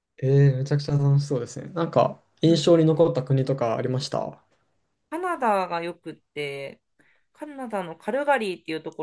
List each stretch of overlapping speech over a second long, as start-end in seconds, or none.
none